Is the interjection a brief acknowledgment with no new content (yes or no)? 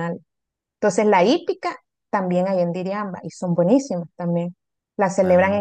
yes